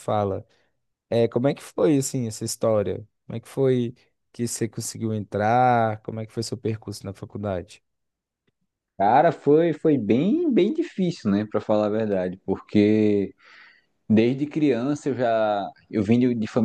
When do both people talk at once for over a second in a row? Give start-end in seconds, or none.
none